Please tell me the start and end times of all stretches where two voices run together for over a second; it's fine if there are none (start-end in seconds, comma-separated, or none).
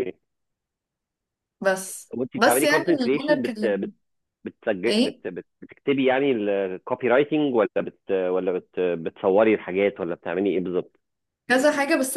2.1-3.9